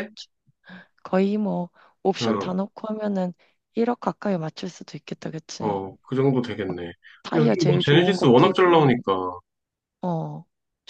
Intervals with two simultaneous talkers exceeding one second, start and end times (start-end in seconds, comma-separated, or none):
7.3-8.9